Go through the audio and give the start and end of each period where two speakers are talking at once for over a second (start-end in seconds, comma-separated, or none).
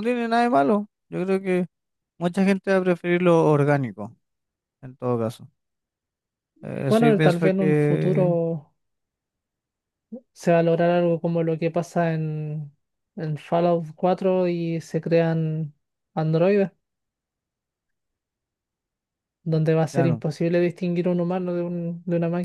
6.9-8.3